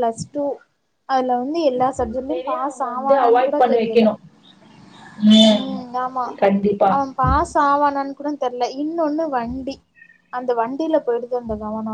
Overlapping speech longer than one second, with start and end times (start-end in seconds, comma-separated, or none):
2.1-4.0